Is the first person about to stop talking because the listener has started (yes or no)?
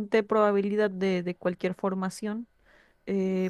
no